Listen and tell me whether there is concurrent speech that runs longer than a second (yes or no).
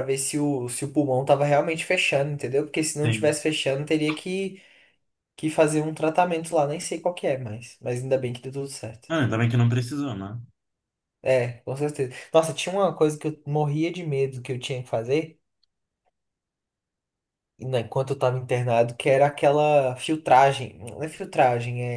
no